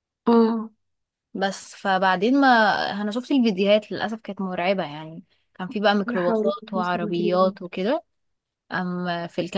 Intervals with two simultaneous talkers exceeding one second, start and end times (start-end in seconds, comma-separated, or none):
6.1-7.5